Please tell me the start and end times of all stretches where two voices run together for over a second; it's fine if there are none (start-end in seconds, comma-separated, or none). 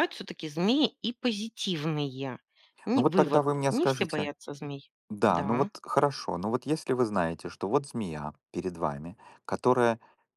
3.0-4.3